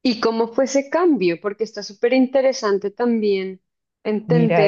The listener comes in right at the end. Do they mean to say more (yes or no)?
yes